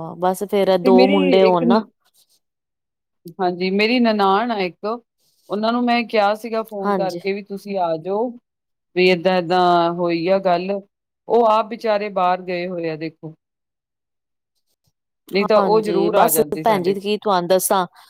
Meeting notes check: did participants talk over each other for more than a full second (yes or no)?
yes